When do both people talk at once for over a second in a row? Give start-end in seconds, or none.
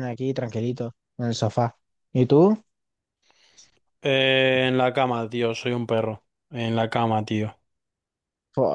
none